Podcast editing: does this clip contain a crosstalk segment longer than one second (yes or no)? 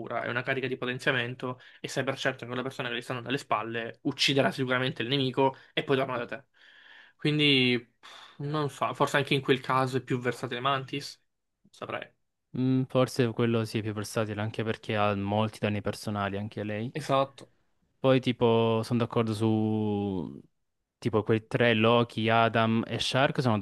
no